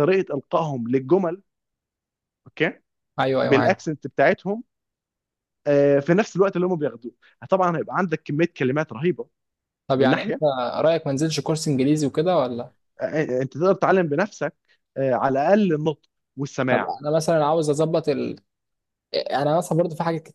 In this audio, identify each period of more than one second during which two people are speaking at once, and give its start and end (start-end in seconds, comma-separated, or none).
none